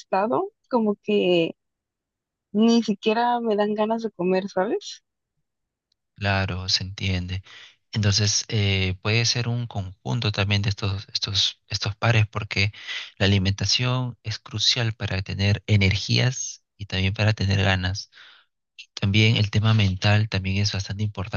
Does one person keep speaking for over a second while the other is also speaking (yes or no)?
no